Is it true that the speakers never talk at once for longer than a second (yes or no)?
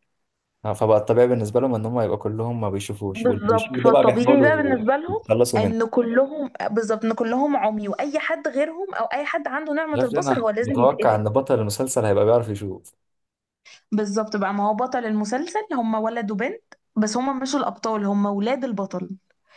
no